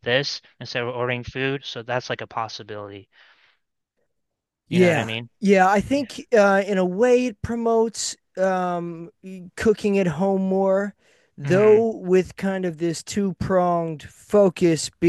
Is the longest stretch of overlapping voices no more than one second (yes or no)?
yes